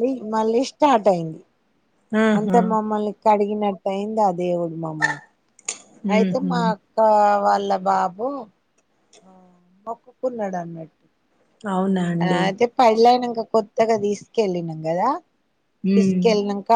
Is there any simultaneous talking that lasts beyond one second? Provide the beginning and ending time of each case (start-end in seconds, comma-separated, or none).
none